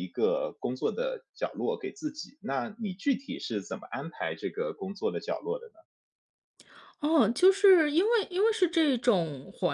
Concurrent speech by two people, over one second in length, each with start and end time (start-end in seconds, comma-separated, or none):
none